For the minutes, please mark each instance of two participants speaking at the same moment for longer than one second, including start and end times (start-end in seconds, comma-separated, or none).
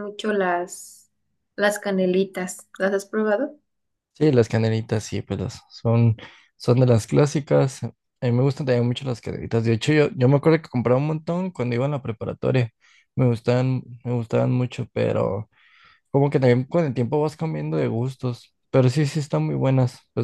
none